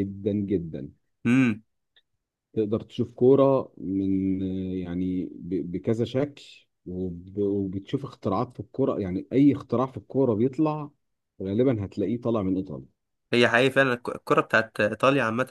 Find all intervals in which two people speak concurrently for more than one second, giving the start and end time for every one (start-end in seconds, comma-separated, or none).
none